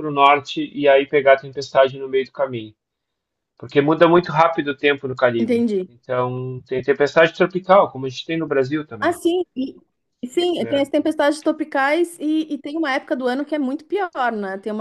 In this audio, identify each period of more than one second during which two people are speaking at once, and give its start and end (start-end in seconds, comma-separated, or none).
none